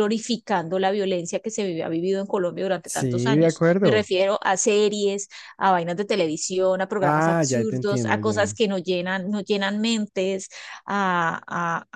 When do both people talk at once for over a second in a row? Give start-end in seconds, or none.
2.9-4.1, 7.0-8.6